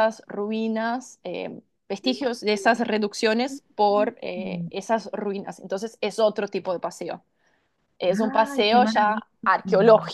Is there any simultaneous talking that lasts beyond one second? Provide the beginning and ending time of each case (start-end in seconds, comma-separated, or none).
8.1-9.3